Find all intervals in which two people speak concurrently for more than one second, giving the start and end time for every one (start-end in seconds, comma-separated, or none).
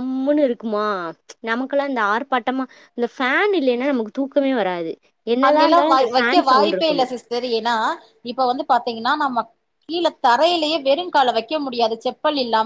5.5-7.1